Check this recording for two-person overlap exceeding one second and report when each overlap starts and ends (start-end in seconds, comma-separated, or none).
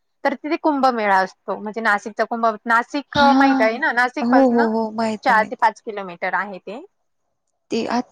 none